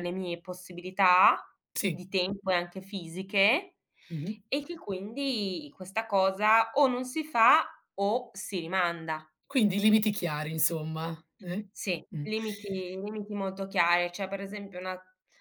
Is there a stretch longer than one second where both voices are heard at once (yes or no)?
no